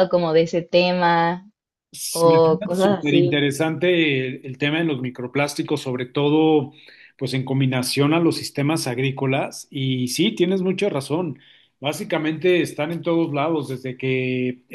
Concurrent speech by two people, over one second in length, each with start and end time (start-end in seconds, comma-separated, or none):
2.2-3.5